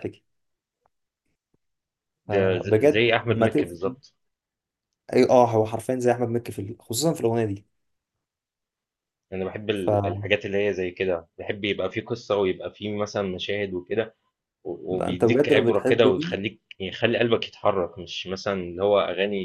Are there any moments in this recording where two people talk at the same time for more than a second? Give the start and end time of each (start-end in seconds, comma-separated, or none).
2.3-3.8, 14.9-16.4